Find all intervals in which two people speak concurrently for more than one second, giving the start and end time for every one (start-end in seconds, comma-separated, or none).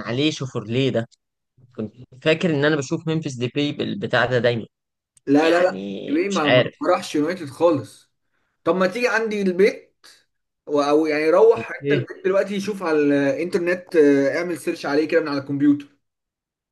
5.3-6.7